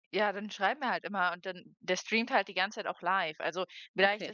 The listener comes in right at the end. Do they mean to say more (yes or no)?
no